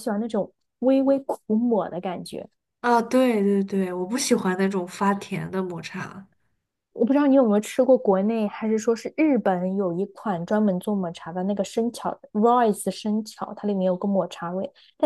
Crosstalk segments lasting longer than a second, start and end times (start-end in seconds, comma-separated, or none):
none